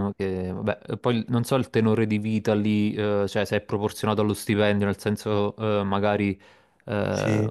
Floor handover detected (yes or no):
no